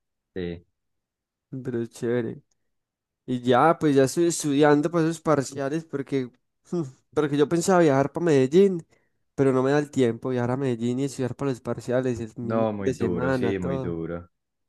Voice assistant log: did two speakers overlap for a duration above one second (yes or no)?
yes